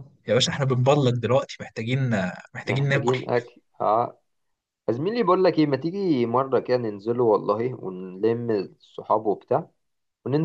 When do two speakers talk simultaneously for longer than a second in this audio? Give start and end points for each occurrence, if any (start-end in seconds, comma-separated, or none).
none